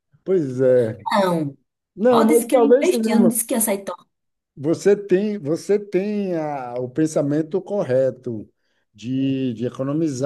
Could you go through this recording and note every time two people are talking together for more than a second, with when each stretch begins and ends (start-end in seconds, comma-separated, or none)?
2.1-3.3